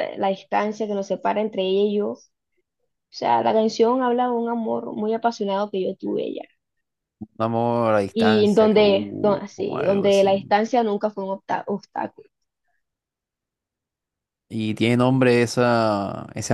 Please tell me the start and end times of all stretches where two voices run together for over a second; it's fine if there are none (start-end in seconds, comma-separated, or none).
8.1-10.3